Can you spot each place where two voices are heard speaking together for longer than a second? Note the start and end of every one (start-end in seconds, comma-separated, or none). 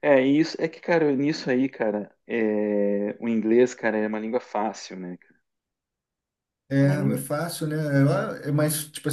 none